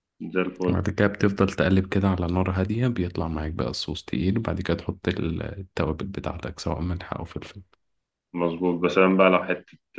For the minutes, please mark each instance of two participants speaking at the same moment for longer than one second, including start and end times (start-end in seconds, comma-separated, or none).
none